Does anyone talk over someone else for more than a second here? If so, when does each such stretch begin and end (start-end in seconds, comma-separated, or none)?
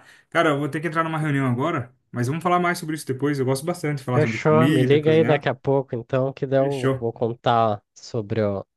4.1-5.5